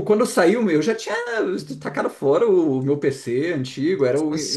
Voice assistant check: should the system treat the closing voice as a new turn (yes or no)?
no